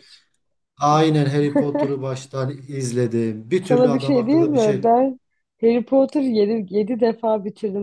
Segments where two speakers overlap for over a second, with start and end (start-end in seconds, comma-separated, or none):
3.6-4.9